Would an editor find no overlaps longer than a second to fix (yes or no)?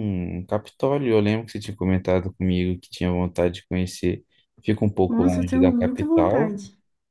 no